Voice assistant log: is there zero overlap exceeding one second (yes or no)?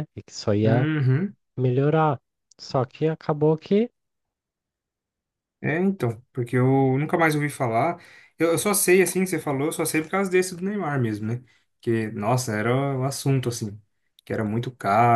yes